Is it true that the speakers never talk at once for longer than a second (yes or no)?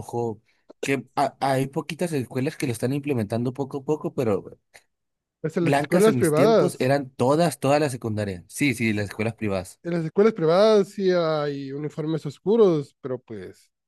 no